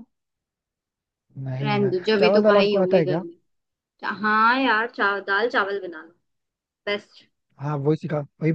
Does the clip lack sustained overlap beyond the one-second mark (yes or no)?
no